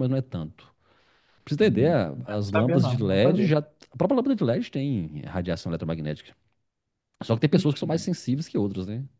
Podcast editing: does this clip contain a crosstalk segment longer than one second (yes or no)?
yes